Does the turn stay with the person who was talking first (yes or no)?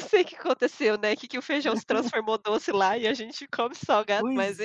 no